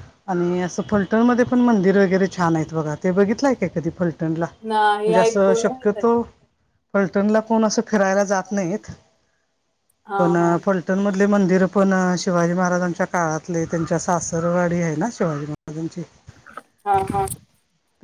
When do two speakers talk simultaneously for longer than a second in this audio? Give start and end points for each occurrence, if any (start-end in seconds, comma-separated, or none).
4.7-6.1